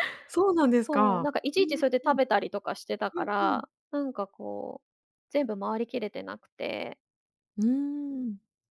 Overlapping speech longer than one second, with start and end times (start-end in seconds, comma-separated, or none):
0.8-2.2